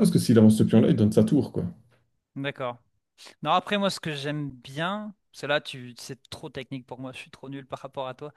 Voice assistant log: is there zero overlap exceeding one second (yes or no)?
yes